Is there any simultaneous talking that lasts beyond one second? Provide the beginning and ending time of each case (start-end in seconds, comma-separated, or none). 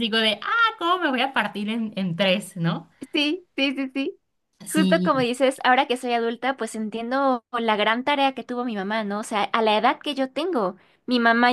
none